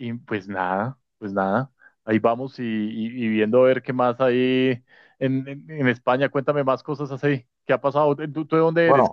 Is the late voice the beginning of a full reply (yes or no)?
yes